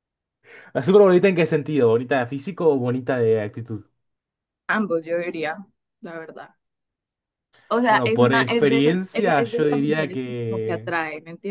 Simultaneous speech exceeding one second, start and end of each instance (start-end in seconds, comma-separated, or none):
7.9-10.9